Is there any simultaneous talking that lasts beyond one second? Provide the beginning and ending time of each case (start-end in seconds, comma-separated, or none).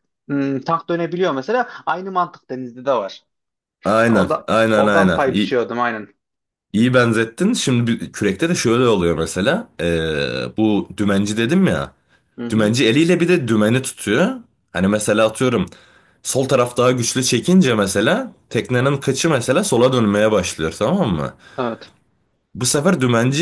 4.1-5.6